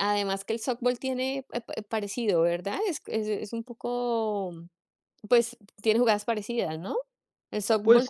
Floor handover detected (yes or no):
yes